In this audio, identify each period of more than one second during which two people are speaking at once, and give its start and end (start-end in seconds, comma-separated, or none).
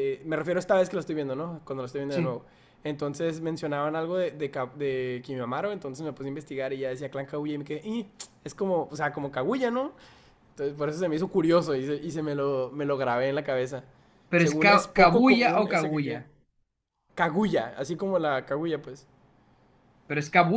14.4-16.2